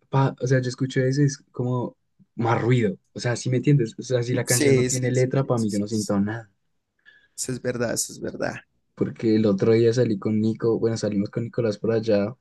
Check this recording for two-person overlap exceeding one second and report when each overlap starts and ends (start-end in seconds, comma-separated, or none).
4.4-6.2